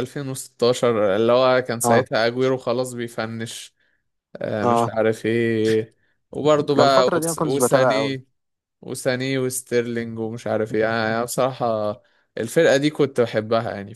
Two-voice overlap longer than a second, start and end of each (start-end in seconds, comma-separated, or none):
6.8-8.2